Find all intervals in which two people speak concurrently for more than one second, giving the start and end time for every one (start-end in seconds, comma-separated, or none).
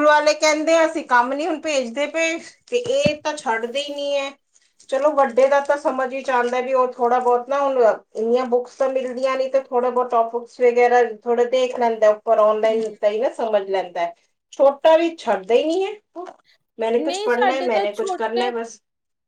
17.0-18.5